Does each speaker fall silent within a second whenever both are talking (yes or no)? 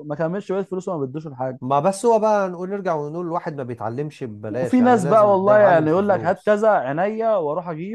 no